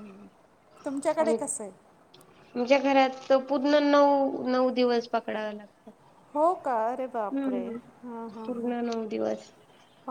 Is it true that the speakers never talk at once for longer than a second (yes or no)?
yes